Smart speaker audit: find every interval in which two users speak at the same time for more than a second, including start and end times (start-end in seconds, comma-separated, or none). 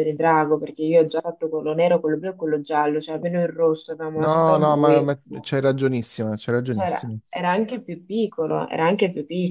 4.2-5.5